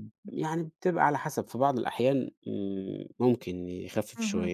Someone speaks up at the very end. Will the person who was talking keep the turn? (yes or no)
no